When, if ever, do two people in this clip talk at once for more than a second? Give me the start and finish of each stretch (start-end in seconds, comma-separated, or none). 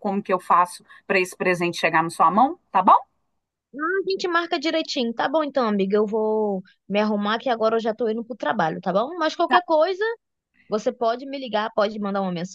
none